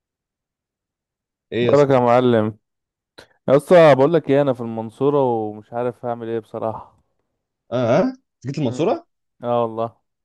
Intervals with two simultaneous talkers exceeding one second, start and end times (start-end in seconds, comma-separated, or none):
none